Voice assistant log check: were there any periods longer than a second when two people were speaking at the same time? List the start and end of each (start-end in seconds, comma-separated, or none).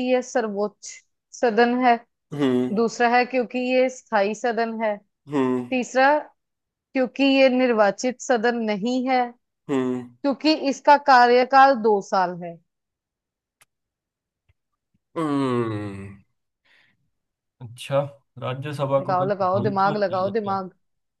19.0-20.6